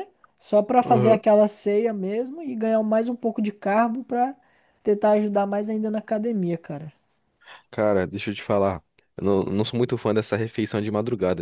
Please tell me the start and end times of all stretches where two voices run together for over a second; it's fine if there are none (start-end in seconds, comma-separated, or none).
none